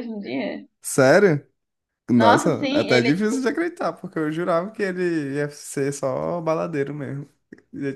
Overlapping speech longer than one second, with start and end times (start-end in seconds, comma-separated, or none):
2.2-3.5